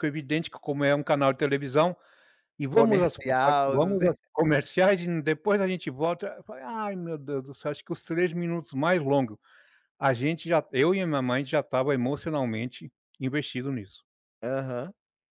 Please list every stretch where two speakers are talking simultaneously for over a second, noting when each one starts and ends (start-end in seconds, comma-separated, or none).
2.7-4.1